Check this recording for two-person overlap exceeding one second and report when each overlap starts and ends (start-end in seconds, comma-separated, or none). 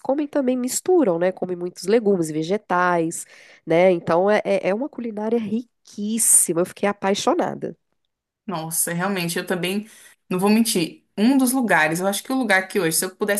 none